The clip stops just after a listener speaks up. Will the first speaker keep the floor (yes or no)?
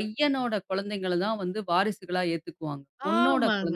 no